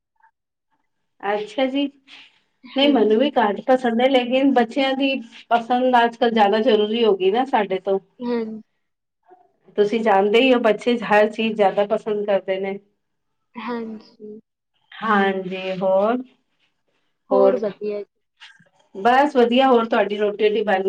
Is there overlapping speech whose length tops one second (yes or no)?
no